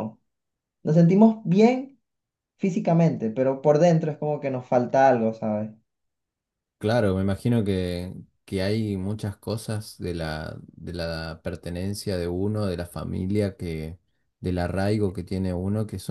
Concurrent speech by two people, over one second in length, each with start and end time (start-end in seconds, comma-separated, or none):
none